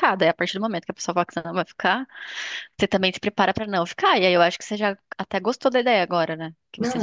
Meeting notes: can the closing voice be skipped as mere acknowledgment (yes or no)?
no